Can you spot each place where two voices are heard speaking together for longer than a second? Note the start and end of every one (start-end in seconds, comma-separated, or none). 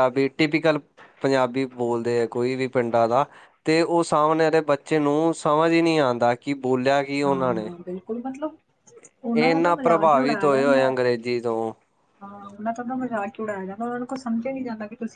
9.3-11.0